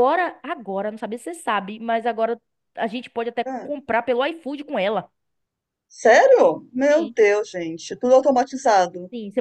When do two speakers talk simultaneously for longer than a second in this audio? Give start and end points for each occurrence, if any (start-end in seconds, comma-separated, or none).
none